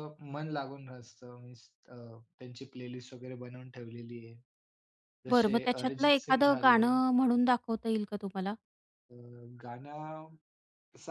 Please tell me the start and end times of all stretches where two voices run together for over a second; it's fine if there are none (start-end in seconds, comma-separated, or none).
5.3-6.9